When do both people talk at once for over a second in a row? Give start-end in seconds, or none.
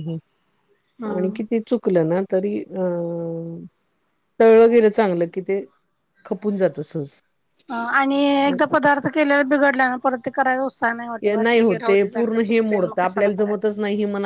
11.2-13.7